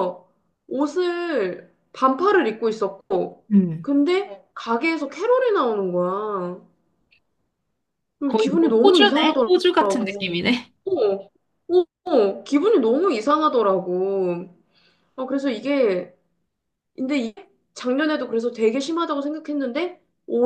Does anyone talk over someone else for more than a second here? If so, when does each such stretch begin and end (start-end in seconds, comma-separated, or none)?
8.3-9.5